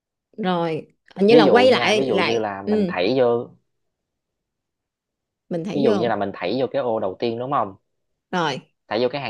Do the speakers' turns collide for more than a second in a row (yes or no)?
yes